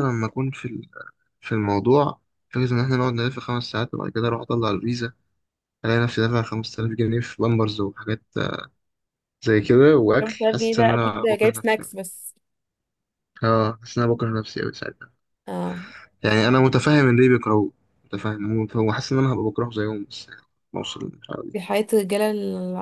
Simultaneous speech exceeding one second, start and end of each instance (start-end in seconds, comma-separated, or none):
10.2-11.9